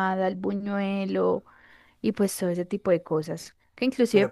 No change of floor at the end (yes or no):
yes